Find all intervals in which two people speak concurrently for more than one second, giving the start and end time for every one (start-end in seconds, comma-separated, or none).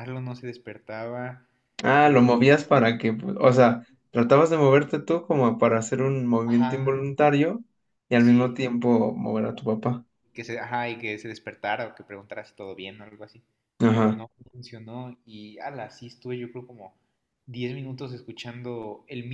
none